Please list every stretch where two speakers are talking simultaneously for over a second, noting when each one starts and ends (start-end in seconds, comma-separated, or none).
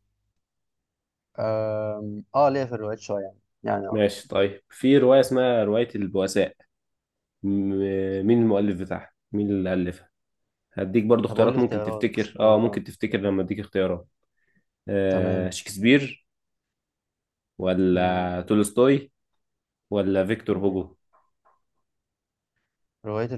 11.3-12.8